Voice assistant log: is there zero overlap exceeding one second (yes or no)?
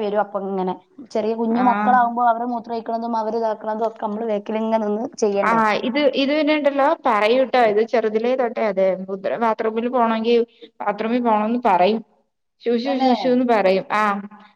yes